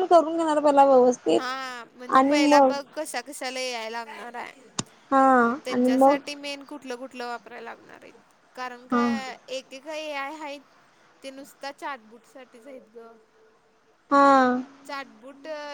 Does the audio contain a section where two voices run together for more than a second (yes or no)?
no